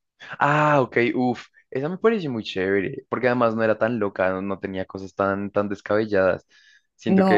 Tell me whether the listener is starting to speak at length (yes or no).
yes